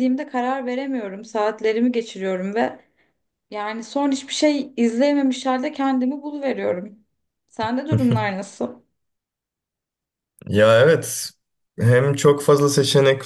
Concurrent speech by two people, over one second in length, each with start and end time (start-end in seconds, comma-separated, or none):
none